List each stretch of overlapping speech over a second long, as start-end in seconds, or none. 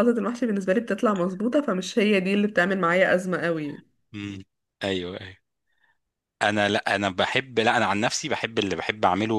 none